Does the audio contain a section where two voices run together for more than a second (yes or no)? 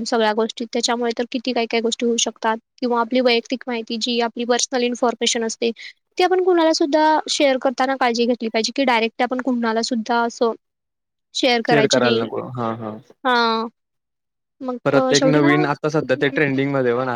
yes